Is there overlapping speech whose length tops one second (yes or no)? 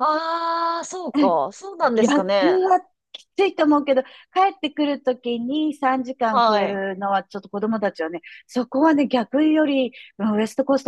no